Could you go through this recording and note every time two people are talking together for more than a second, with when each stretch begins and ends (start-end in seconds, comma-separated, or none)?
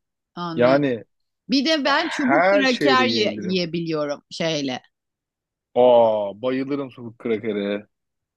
2.0-3.6